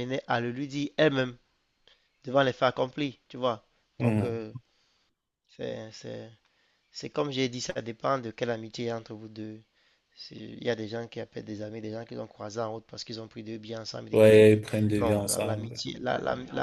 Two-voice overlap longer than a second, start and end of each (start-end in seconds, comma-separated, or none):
14.1-15.8